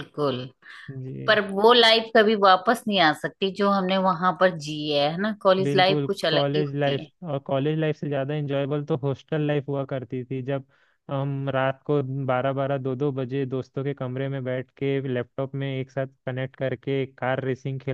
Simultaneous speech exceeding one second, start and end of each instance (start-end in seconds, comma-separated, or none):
5.6-7.1